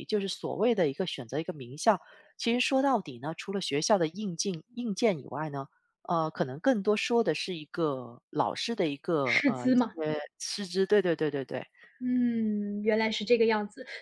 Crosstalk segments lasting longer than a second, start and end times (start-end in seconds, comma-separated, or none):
none